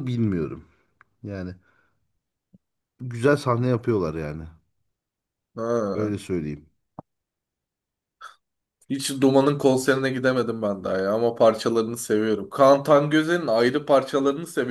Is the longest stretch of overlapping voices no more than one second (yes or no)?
yes